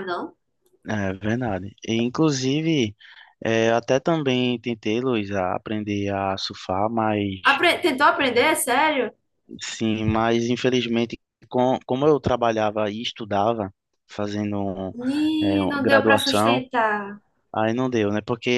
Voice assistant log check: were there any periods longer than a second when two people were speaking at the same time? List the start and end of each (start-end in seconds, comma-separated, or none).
15.4-16.6